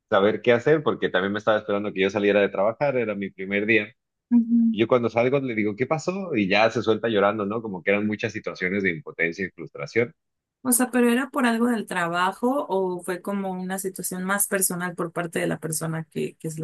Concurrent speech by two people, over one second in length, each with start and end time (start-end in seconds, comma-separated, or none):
none